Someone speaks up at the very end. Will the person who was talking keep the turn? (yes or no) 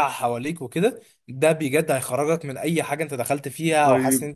no